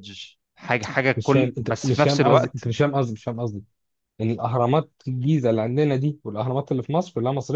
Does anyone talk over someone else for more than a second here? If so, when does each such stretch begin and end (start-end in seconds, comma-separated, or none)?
1.2-2.7